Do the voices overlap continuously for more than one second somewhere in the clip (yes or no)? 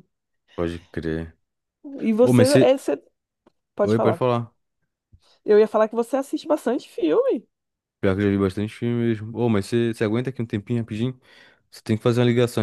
no